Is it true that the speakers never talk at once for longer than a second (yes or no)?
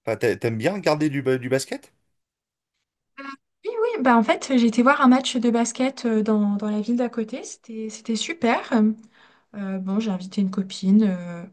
yes